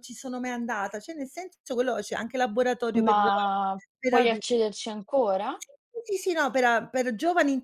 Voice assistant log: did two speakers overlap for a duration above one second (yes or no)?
no